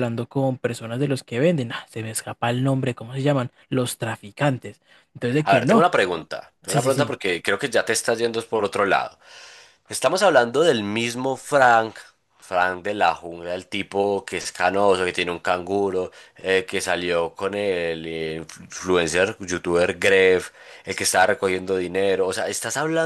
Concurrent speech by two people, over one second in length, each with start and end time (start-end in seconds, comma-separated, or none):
none